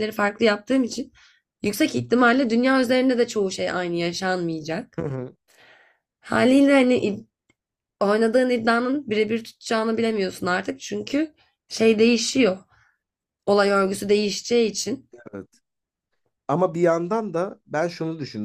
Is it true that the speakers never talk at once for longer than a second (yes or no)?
yes